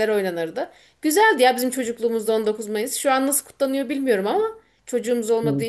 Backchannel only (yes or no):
yes